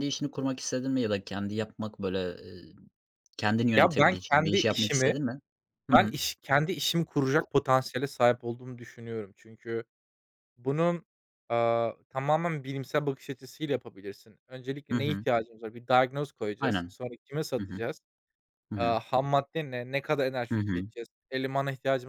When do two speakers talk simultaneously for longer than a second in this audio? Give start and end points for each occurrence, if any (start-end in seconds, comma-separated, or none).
3.7-5.1